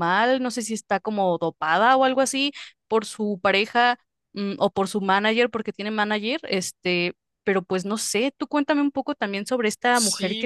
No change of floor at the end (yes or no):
no